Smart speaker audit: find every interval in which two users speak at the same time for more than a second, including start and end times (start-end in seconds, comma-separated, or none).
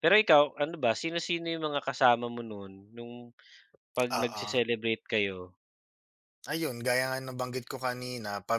none